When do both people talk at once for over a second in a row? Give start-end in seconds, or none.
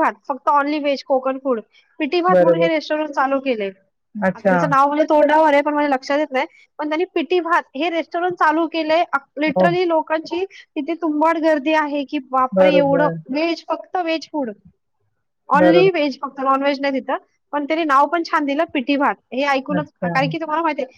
none